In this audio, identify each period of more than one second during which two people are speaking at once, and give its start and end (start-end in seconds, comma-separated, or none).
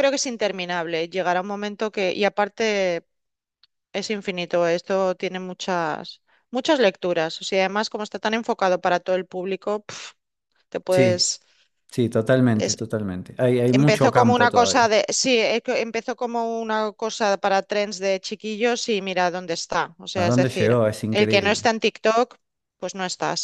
13.7-14.9, 20.1-21.7